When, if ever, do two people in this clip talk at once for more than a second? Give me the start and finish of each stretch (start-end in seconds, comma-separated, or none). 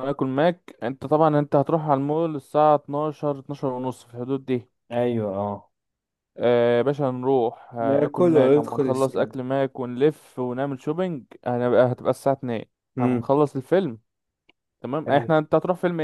7.8-9.3